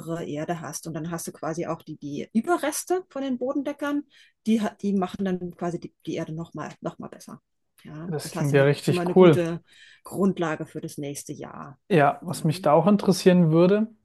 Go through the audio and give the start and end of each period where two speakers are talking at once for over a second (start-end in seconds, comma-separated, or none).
8.1-9.5